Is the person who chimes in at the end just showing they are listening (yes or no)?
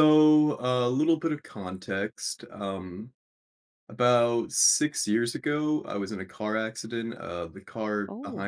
yes